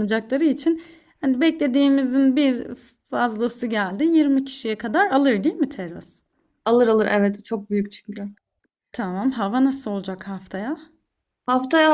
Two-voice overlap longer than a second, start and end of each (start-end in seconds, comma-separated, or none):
none